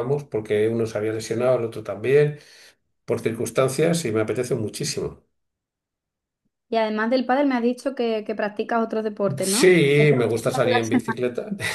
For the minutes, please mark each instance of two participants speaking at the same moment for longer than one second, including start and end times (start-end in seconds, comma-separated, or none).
9.4-11.2